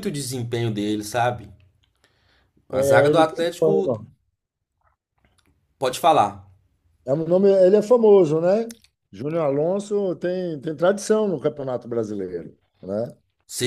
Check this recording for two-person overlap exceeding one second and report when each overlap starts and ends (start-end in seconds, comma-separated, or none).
2.7-3.9